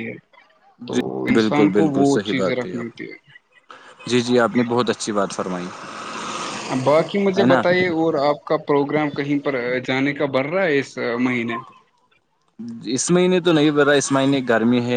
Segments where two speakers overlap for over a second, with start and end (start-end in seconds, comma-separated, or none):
0.9-2.7